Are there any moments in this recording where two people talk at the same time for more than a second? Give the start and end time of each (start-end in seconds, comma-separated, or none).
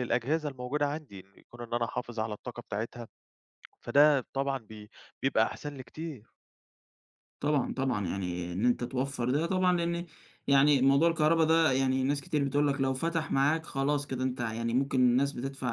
none